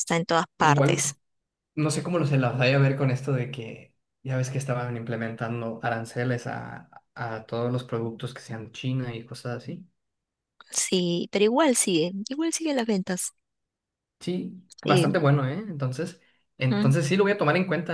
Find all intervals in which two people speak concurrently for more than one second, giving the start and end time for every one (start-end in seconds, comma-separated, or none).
none